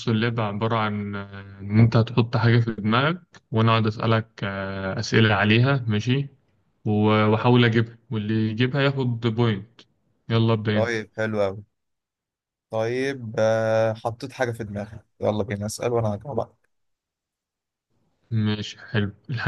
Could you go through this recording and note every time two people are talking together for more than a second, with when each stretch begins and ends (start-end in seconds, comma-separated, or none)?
none